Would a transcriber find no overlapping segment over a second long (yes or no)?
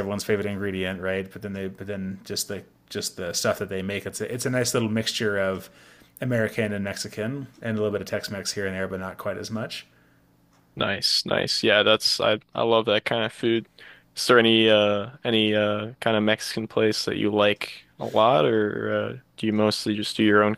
yes